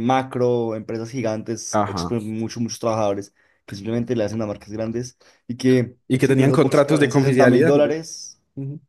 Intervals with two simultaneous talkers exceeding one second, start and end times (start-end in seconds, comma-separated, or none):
6.1-7.9